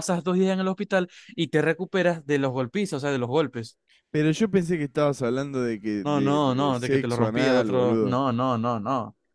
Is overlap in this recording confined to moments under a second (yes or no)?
no